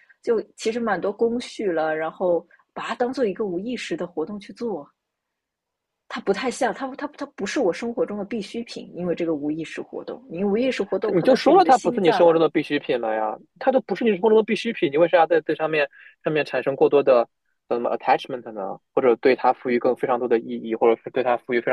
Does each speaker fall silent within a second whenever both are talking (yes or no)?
no